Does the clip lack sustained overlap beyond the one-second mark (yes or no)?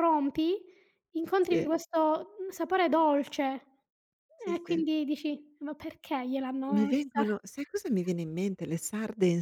yes